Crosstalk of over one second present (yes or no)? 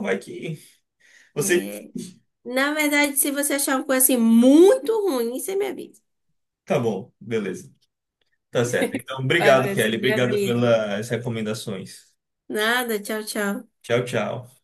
yes